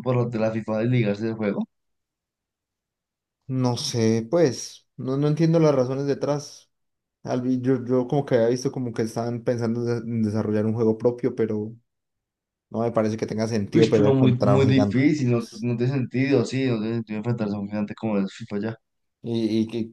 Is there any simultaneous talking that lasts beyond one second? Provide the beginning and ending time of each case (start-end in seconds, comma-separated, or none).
13.7-15.1